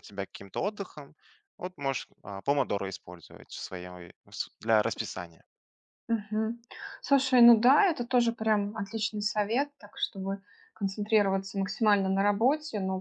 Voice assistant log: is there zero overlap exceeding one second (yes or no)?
yes